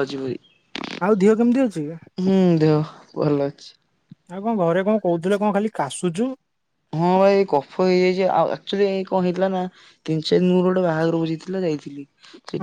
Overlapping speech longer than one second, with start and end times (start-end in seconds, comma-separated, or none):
none